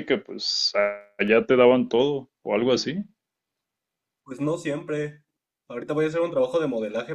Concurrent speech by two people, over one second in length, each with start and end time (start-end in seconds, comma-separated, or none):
none